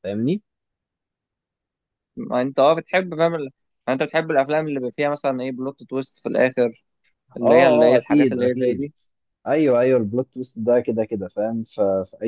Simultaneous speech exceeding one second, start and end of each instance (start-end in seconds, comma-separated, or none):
7.4-8.9